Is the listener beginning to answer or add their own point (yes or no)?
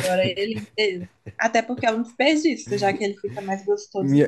yes